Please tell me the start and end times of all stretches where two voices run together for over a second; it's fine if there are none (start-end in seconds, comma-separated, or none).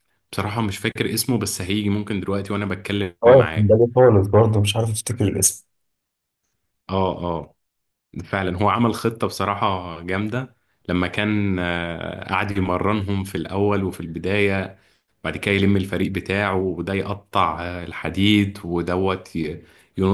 none